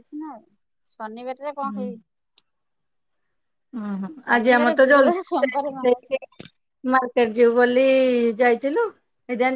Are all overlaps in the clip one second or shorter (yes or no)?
no